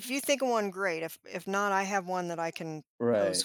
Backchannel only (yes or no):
no